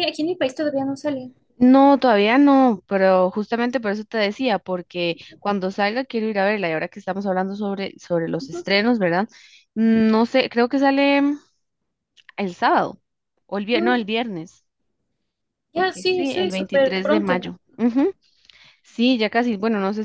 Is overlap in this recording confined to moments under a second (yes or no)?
no